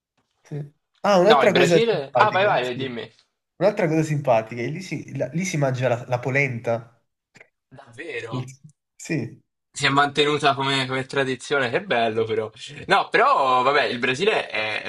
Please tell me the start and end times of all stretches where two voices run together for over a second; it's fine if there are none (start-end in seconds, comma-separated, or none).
1.3-2.9